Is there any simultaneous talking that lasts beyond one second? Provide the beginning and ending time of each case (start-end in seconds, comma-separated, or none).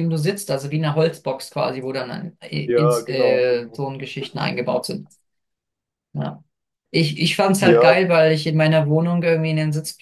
2.6-3.8